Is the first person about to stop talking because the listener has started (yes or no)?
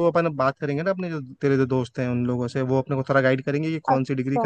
no